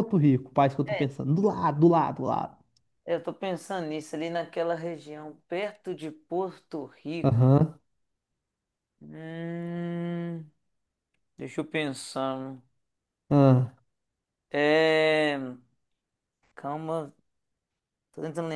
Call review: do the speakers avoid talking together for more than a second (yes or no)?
yes